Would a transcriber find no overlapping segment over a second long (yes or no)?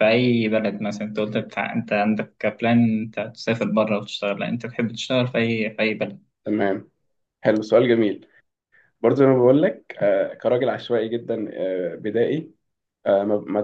yes